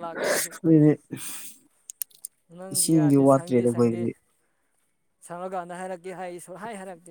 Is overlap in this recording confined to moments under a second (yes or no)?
no